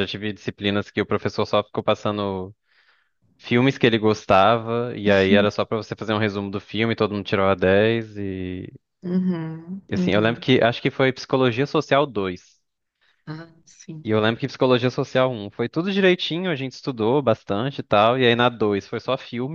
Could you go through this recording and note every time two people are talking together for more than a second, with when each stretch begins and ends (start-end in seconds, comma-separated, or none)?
none